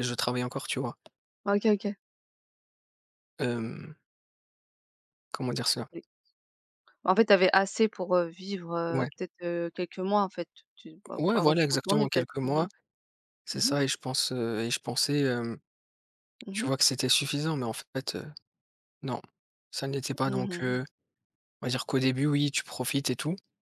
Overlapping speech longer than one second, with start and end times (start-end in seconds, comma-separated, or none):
11.2-12.7